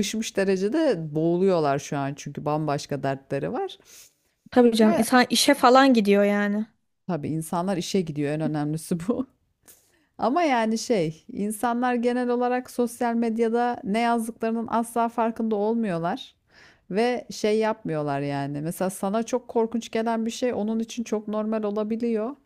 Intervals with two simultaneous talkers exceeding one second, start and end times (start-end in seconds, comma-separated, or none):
none